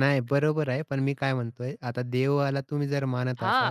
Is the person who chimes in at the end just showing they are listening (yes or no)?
no